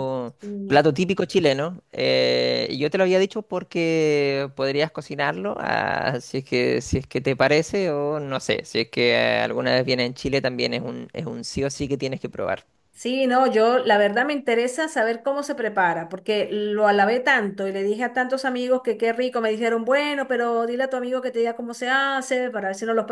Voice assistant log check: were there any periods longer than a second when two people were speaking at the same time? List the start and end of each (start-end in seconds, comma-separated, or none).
none